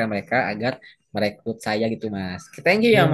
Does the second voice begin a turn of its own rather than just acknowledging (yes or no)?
yes